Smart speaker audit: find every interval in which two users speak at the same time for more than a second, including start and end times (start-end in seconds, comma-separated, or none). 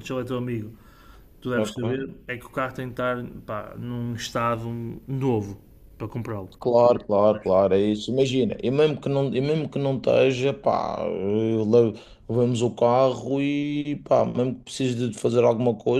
none